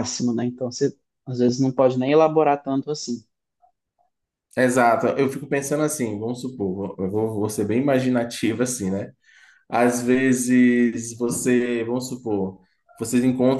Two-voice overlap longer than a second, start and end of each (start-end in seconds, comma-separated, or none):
none